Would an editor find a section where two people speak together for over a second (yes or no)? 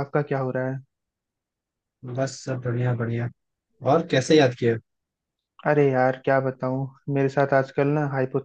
no